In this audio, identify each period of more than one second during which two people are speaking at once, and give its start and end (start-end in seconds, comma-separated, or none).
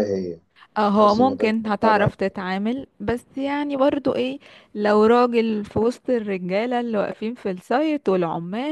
0.8-2.1